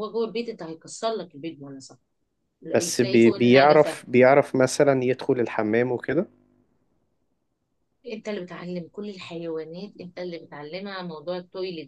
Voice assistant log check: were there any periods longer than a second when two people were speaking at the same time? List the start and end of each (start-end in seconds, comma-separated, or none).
2.7-4.0